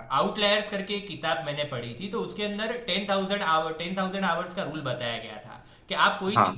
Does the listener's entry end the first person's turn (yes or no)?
no